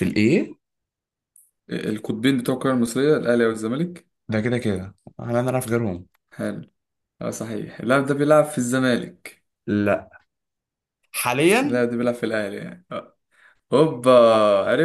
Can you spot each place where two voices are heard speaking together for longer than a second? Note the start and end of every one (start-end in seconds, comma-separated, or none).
none